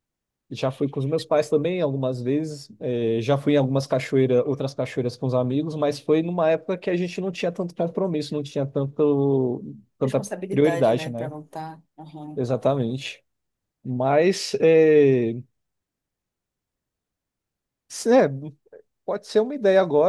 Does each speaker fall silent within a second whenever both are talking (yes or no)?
no